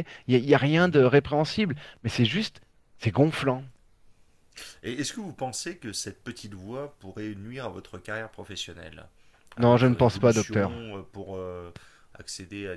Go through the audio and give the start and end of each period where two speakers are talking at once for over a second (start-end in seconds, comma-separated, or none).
9.6-10.9